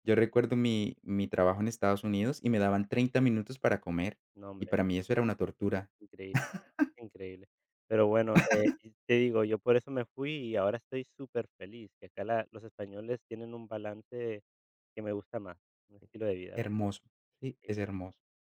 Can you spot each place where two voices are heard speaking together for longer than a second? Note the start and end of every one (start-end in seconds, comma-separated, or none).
none